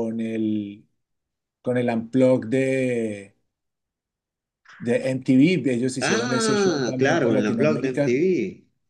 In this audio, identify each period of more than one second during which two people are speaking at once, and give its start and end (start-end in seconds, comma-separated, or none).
6.0-8.2